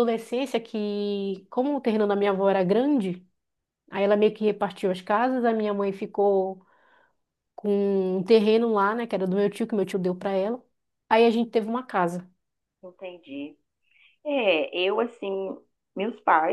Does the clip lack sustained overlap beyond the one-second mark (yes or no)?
yes